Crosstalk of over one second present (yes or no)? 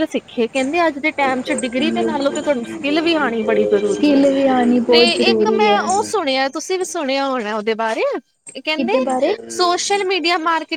yes